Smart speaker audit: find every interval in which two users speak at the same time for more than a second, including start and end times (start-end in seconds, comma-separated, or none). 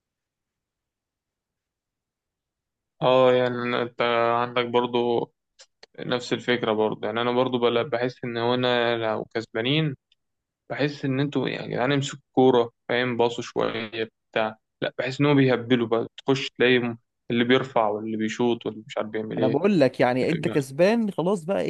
none